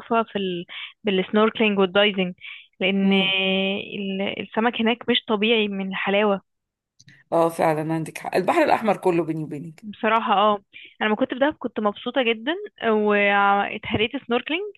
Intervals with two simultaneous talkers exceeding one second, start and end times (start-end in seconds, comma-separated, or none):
none